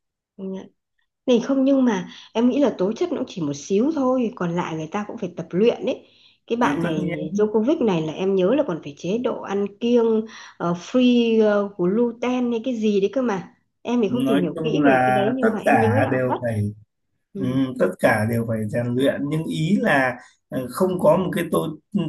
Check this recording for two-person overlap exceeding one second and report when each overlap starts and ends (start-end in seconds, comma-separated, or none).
14.1-16.4